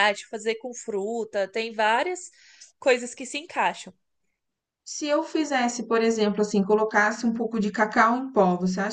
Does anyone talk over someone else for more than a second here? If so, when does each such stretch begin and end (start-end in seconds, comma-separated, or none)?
none